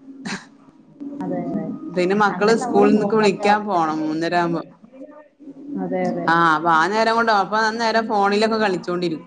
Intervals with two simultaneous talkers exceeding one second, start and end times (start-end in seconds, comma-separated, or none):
2.4-4.1